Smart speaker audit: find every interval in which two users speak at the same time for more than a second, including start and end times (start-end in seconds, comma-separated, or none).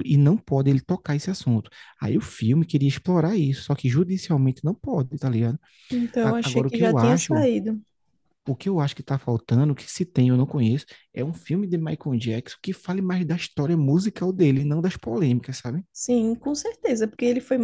6.2-7.5